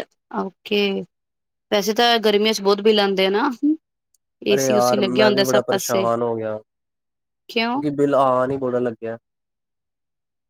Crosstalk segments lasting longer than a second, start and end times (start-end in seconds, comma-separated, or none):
4.5-6.0